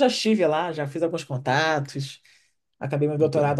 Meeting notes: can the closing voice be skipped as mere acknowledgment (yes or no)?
yes